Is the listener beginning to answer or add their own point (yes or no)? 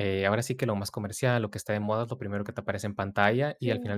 no